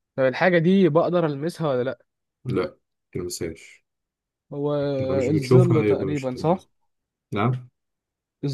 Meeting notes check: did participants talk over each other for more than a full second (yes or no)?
yes